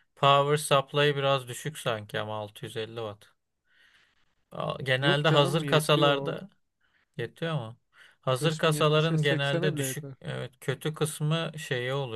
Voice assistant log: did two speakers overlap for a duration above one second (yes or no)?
yes